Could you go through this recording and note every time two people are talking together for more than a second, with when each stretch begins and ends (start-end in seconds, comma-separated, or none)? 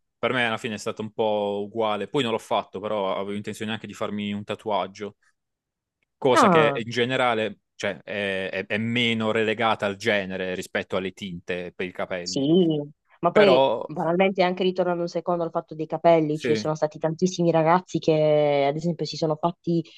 none